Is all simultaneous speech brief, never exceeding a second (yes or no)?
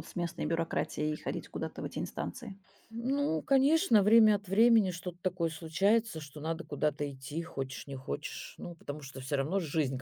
yes